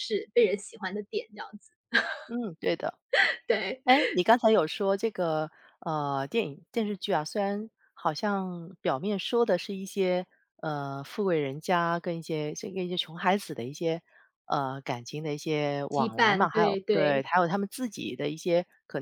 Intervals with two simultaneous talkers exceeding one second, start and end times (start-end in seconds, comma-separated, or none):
15.9-17.2